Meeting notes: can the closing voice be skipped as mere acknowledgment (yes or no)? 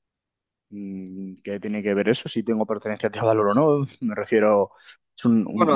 no